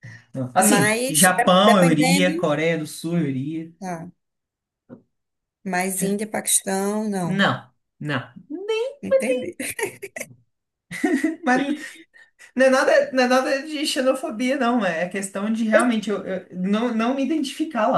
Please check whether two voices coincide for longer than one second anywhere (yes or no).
yes